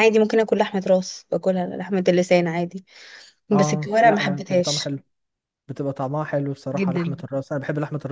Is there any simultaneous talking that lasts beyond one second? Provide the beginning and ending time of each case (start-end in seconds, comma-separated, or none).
3.6-5.0